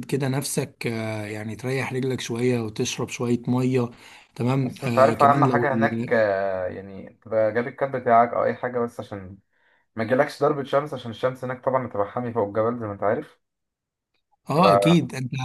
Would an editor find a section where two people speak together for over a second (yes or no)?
yes